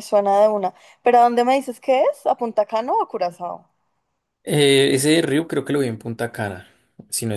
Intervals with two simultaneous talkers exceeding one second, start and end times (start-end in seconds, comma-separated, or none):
none